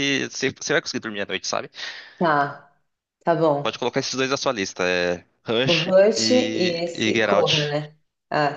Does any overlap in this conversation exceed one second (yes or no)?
yes